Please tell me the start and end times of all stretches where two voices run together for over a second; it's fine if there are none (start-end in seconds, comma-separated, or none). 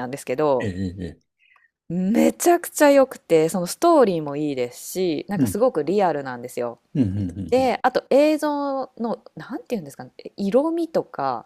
none